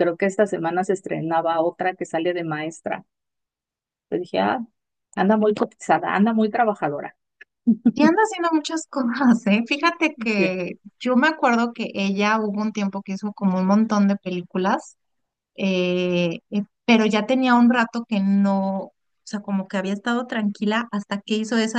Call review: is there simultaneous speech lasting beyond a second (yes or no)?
no